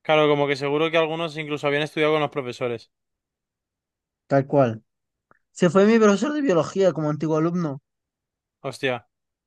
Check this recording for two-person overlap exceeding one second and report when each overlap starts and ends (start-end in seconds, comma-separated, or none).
none